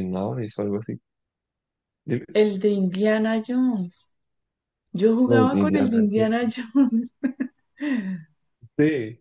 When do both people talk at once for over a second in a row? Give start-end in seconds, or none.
5.2-6.5